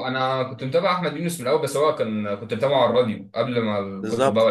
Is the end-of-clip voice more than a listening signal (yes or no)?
yes